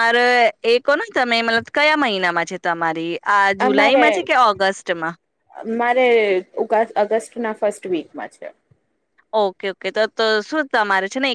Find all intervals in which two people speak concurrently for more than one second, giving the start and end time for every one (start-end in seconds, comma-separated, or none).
none